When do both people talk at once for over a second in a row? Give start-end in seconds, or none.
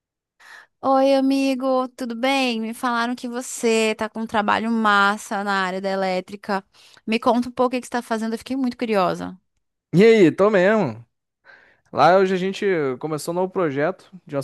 none